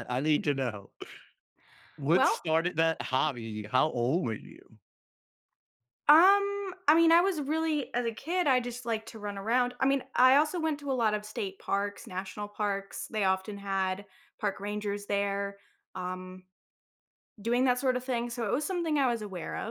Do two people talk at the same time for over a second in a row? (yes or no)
no